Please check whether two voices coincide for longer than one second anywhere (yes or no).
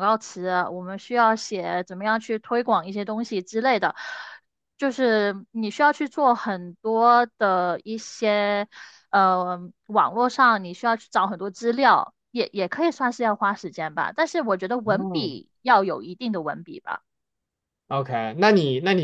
no